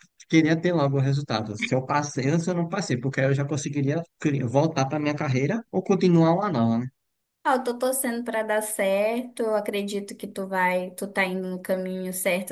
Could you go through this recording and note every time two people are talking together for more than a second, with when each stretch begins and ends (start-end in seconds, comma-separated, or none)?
none